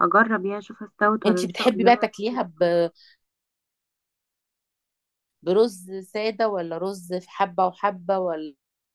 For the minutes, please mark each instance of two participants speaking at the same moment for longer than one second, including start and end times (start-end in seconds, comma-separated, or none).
1.2-2.7